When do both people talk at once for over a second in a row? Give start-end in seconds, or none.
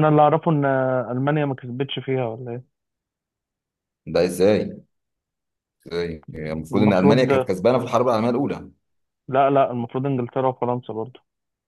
none